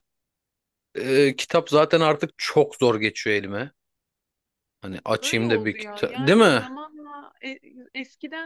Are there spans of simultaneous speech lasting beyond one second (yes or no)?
yes